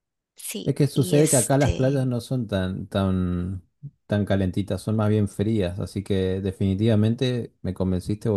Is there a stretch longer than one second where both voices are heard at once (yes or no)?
yes